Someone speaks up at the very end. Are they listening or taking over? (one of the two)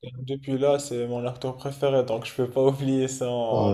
taking over